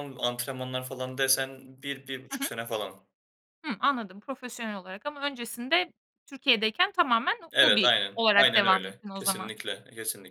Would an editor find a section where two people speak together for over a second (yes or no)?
yes